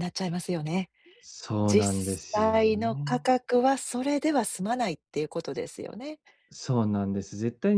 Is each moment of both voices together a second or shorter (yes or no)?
no